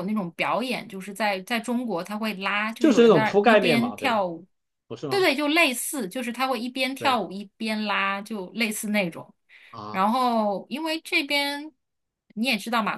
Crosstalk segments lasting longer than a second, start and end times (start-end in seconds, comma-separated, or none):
2.8-4.2